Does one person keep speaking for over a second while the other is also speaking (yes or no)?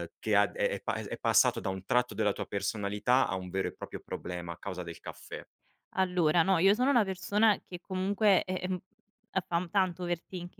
no